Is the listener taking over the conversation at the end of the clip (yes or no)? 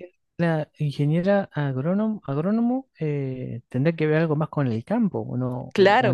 yes